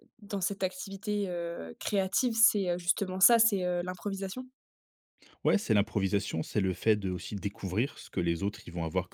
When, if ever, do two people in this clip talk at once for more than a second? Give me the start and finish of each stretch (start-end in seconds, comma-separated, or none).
none